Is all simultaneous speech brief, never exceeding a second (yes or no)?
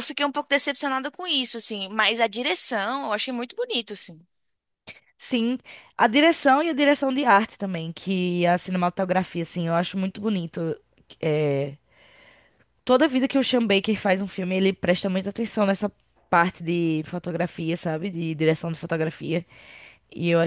yes